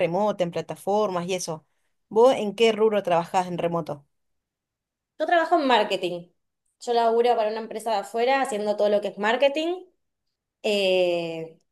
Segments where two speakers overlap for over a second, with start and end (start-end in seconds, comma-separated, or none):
none